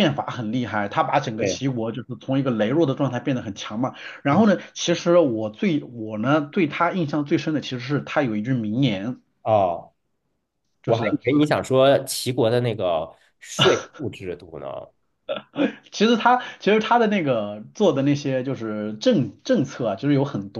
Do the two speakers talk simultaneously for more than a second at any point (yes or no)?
no